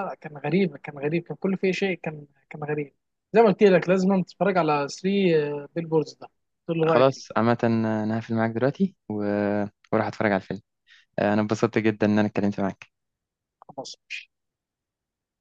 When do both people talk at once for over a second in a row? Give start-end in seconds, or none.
none